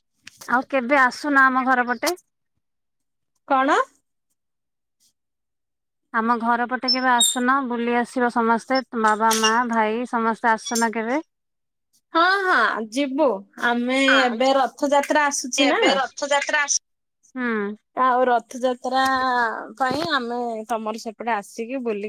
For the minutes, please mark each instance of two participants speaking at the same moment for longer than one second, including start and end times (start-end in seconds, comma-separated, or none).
none